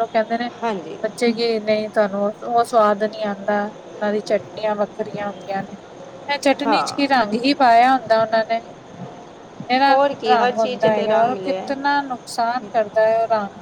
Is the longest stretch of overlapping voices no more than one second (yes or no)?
no